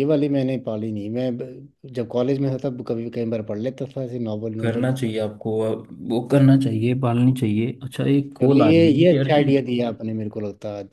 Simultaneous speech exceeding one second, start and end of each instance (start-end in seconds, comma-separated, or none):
8.4-9.7